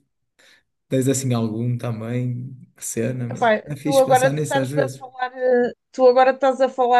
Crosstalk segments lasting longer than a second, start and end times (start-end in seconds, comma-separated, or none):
3.3-5.0